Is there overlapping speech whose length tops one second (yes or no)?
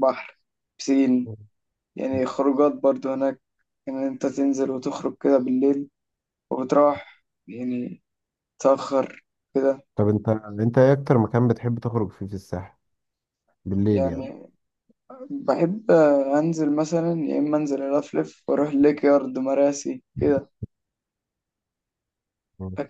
no